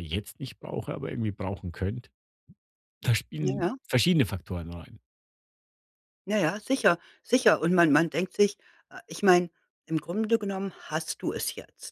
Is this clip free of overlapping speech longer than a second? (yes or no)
yes